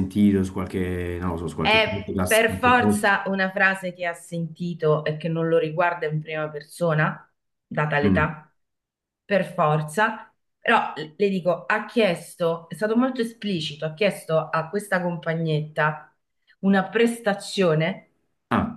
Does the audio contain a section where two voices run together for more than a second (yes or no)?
yes